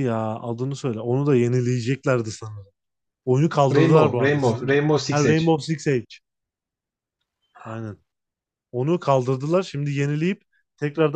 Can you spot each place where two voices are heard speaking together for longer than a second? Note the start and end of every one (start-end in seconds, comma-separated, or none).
3.7-5.6